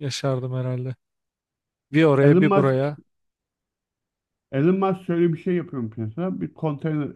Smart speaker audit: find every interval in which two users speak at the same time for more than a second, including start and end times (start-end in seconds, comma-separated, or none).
none